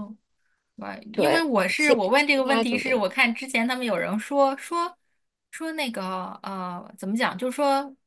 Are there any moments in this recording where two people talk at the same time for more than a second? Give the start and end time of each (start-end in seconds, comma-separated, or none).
1.1-3.0